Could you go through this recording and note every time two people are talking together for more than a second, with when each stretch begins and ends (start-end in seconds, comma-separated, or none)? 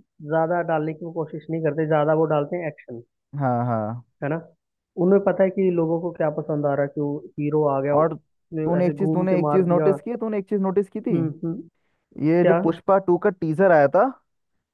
8.0-9.9